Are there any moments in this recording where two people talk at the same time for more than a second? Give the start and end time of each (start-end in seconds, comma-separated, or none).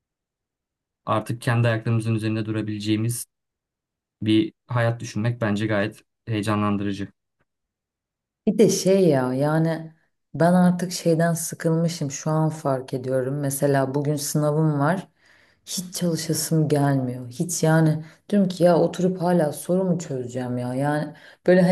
none